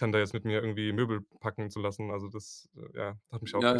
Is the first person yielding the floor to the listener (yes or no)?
yes